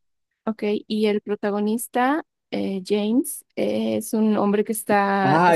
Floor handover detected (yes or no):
yes